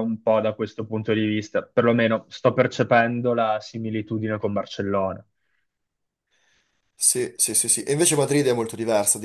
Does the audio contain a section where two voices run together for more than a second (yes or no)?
no